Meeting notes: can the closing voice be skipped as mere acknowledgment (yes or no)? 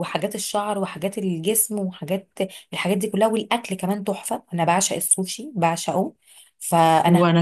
yes